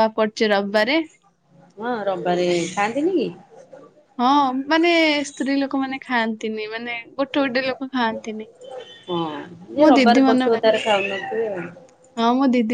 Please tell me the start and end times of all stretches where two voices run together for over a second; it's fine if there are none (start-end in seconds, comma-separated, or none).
9.8-11.6